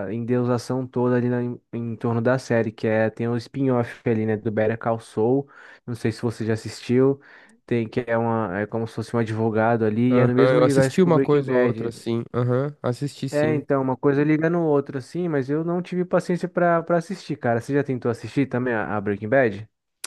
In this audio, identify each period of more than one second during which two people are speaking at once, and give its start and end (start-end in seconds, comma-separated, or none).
10.1-12.1